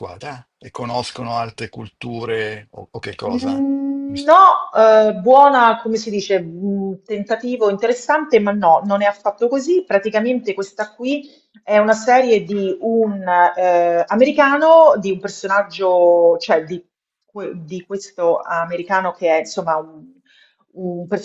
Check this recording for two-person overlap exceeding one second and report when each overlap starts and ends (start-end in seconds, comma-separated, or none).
none